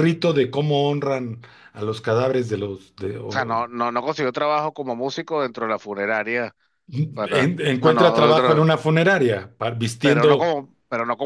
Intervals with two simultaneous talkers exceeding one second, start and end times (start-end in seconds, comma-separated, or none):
7.1-8.6